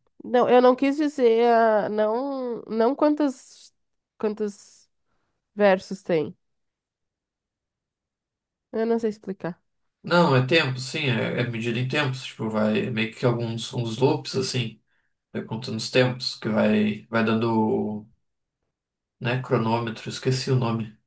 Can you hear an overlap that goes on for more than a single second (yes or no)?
no